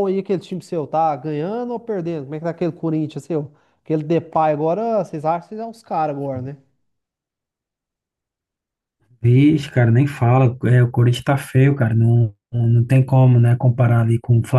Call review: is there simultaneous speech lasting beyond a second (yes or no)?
no